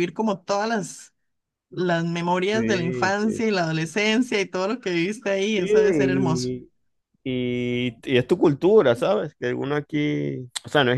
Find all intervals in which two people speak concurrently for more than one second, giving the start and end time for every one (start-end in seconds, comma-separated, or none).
2.5-3.9